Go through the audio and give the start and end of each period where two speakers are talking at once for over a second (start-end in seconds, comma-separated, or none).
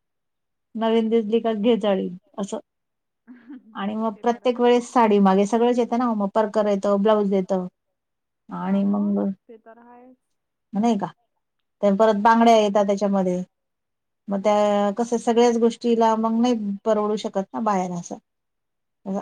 none